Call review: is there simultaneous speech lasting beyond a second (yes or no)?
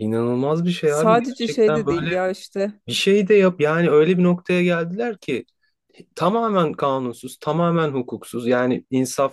yes